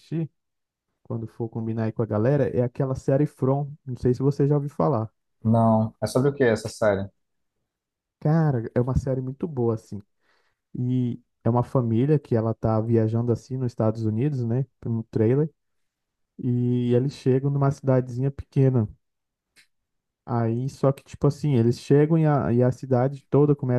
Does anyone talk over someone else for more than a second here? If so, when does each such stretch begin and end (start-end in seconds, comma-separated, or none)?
none